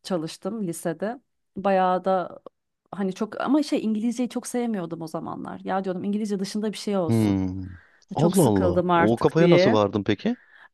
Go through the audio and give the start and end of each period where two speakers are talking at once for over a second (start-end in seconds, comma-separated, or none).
8.2-9.8